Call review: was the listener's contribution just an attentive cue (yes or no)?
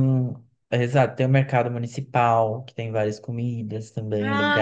no